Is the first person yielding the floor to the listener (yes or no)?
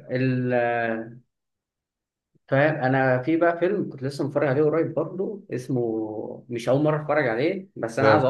no